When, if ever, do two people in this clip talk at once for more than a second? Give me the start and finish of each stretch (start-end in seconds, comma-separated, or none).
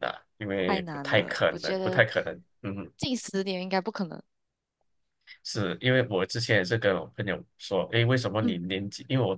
0.7-2.0